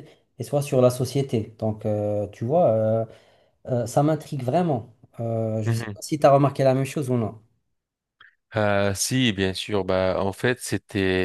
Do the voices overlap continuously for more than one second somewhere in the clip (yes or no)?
no